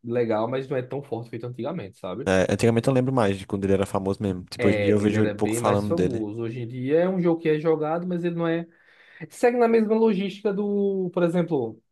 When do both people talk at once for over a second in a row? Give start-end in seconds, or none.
4.6-6.2